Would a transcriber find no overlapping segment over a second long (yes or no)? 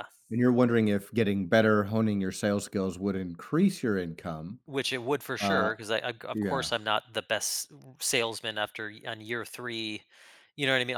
yes